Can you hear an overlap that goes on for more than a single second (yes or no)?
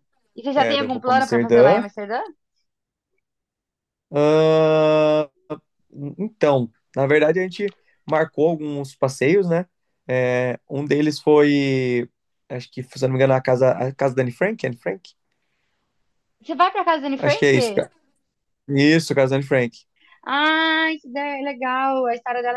yes